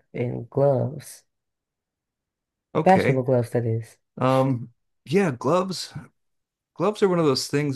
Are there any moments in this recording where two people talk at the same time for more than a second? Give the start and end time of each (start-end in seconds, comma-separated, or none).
none